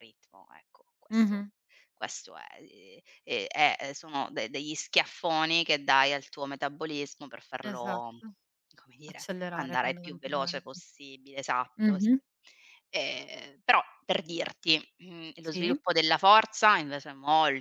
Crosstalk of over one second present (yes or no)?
yes